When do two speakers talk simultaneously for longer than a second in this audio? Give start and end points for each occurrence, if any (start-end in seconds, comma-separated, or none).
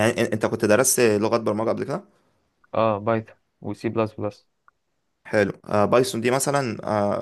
none